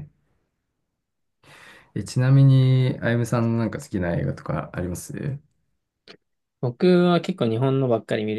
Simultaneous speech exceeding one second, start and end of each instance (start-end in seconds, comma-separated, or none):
none